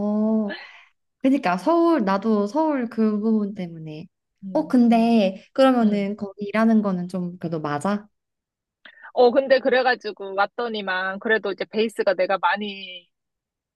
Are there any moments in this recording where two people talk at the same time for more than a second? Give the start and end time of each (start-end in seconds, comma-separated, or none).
none